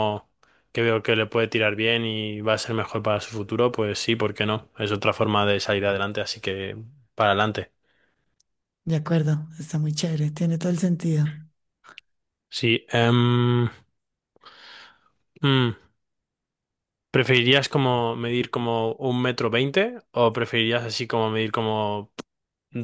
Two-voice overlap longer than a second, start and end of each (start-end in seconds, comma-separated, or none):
none